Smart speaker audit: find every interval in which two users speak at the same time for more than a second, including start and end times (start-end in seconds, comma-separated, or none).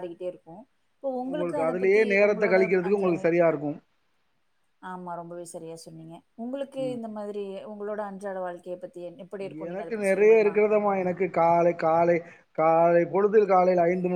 1.3-3.2